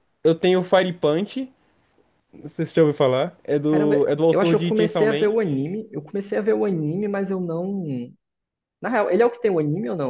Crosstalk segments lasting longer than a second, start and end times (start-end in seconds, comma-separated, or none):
3.7-5.3